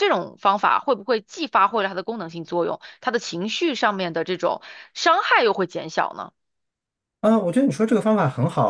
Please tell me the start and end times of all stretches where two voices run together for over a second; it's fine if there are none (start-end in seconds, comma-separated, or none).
none